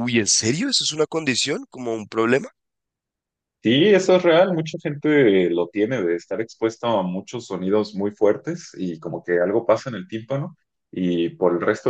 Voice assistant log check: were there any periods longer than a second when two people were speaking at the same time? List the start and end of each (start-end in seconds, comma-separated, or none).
none